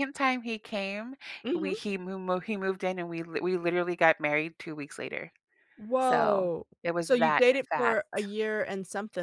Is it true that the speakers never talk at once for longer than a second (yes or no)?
no